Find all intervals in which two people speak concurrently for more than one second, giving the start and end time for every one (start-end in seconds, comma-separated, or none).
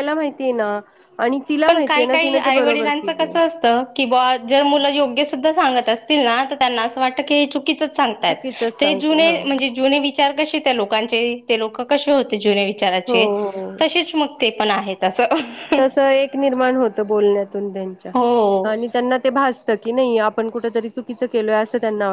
1.7-3.4